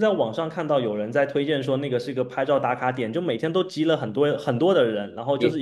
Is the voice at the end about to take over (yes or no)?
no